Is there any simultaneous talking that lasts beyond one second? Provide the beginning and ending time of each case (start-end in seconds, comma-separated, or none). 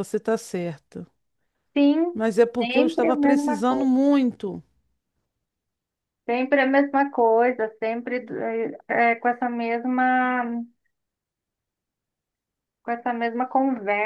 2.1-4.0